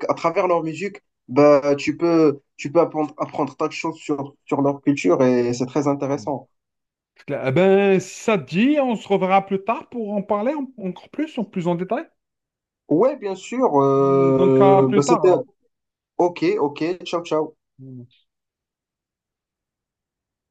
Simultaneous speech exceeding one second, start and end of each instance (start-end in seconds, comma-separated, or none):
14.1-15.3